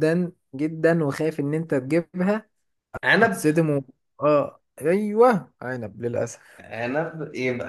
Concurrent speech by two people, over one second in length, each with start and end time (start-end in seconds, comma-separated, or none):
none